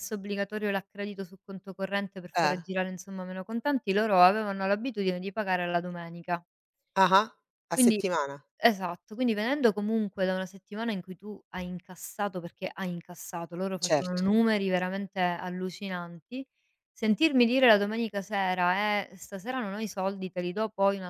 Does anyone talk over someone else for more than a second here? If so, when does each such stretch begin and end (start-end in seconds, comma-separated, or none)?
none